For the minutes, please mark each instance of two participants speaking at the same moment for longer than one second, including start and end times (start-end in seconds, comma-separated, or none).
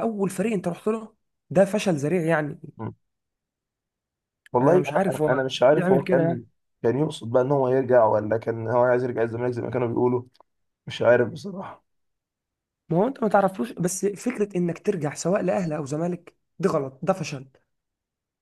4.6-6.4